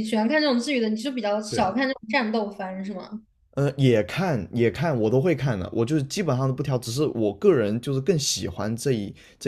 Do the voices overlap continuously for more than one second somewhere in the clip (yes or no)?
no